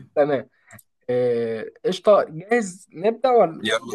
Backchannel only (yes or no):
yes